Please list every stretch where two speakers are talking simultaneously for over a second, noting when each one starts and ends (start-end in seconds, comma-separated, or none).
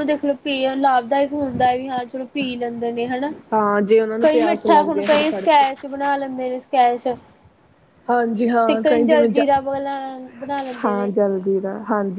4.2-5.6